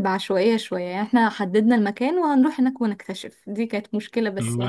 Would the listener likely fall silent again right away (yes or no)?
no